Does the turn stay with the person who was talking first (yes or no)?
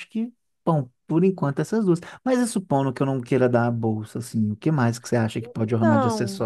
no